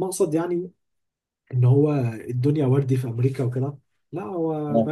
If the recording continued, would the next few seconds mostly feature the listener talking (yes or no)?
no